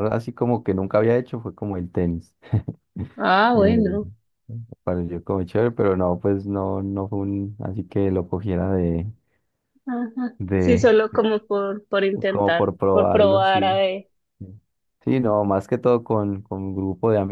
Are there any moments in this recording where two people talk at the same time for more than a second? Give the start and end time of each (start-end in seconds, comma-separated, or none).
12.3-13.8